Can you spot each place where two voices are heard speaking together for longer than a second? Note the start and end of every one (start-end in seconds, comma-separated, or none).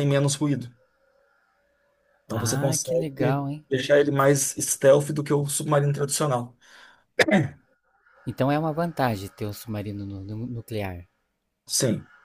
2.3-3.6